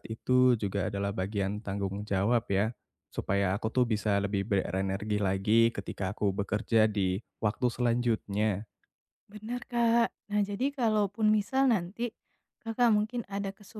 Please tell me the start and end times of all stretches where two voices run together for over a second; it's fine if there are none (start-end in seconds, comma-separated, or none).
none